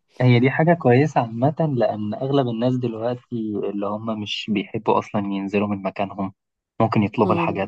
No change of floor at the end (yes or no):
yes